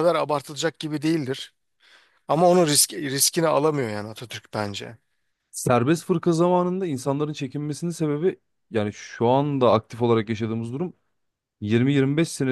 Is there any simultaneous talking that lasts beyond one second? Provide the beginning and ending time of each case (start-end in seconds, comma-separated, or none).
none